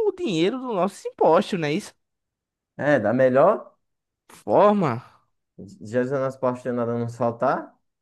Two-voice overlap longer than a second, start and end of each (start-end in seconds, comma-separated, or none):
none